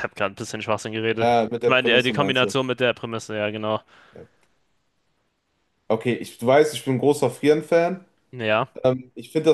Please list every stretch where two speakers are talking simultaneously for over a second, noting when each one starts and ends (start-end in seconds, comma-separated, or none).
1.1-2.5